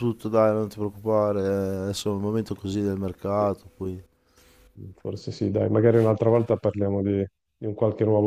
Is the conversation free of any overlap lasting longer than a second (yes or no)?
yes